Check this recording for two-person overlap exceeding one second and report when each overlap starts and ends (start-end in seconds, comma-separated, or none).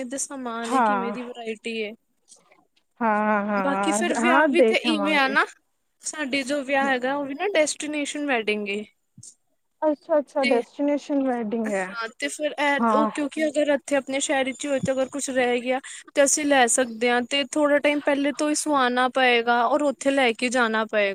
none